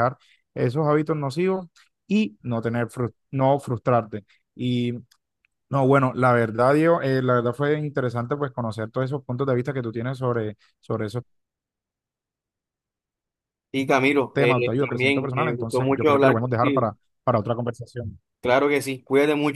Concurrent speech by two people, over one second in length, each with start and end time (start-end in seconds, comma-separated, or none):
14.3-16.9